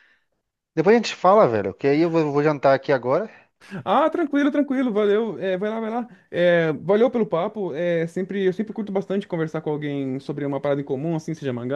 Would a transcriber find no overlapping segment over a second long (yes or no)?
yes